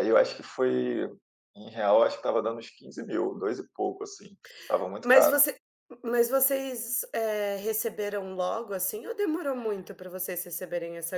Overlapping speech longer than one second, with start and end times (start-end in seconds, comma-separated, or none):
none